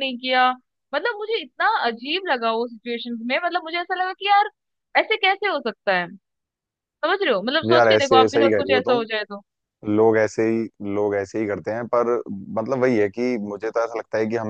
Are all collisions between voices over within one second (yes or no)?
no